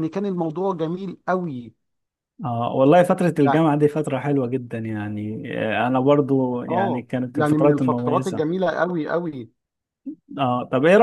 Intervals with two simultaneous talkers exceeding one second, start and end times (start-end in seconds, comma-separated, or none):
6.7-8.5